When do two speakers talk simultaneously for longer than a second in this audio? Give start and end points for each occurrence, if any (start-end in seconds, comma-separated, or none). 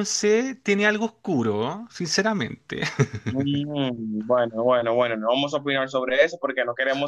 none